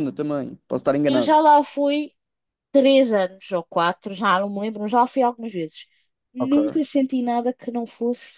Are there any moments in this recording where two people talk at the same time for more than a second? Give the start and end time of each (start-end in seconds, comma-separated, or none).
none